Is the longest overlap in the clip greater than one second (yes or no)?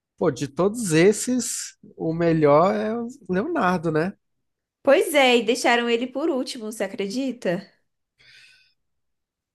no